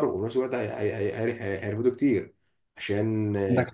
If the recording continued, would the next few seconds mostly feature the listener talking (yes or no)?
no